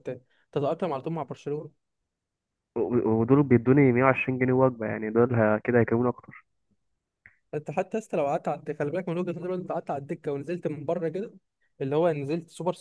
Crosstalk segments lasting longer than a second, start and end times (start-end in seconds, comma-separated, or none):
none